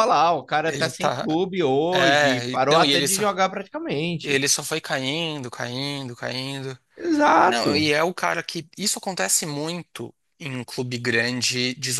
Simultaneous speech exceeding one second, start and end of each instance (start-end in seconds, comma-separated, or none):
1.9-3.2